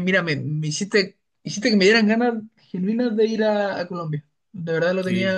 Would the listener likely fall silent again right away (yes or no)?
yes